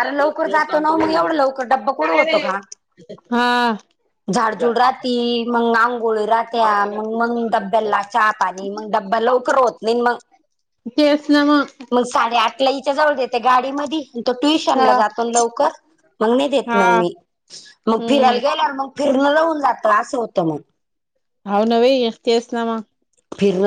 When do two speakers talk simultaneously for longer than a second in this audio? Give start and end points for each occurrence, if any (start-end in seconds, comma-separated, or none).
none